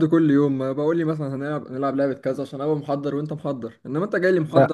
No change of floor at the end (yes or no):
no